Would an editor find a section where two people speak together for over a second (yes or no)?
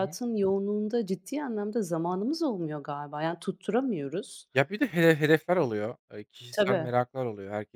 no